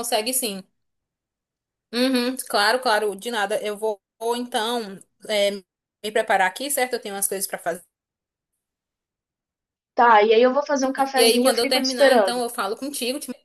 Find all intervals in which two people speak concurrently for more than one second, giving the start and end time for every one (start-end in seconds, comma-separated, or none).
11.2-12.4